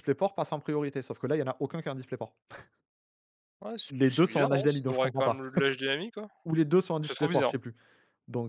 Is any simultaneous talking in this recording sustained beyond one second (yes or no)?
yes